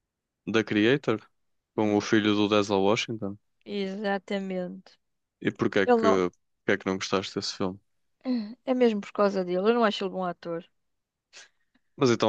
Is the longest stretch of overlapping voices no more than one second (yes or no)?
yes